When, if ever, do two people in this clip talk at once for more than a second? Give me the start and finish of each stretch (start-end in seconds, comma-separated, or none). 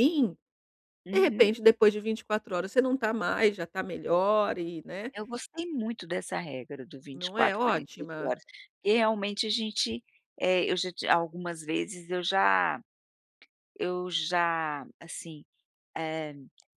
7.1-8.3